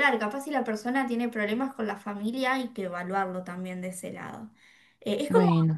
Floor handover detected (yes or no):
no